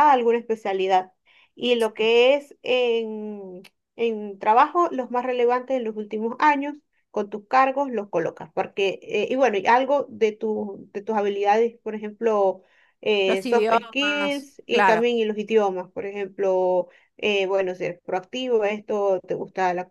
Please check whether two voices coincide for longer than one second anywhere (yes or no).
yes